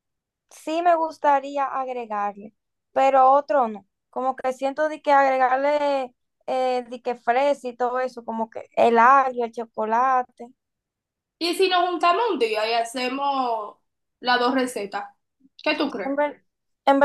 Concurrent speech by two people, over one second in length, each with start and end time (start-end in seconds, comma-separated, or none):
none